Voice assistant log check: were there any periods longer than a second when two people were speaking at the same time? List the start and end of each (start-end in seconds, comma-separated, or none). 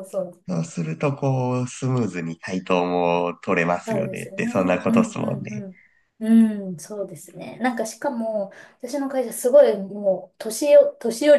3.8-5.7